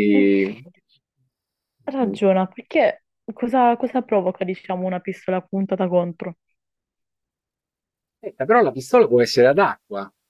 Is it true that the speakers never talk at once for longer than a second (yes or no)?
yes